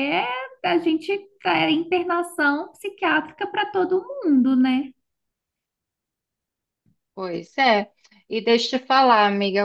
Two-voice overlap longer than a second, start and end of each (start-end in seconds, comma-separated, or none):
none